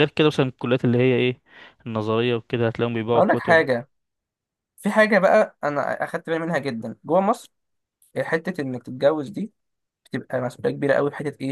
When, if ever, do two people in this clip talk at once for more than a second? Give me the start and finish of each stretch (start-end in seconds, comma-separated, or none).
none